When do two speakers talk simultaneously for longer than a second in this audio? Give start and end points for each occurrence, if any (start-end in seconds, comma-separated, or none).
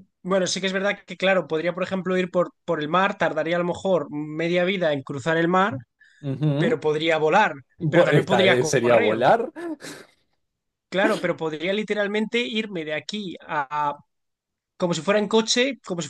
7.8-9.2